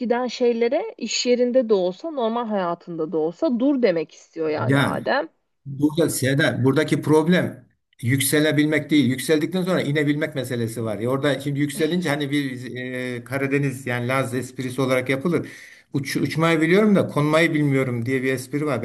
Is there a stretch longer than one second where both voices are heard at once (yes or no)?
no